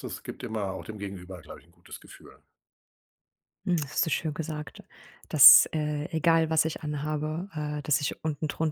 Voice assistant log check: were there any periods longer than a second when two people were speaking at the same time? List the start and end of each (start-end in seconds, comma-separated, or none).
none